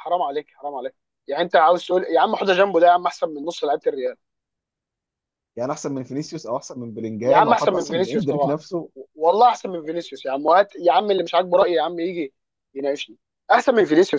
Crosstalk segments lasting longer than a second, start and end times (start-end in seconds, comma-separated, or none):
7.2-8.6